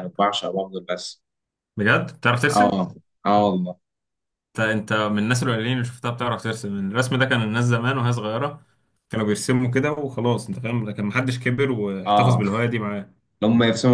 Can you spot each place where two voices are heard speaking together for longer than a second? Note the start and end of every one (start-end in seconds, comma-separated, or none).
none